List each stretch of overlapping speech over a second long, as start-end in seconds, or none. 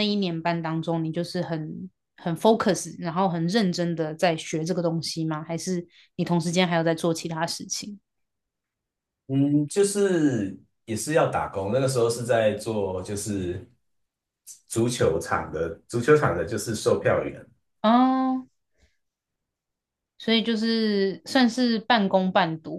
none